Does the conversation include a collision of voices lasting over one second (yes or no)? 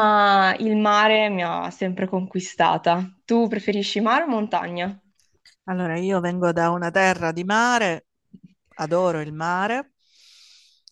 no